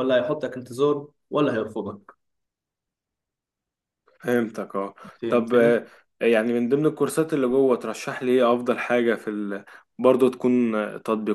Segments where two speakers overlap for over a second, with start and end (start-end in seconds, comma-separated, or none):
none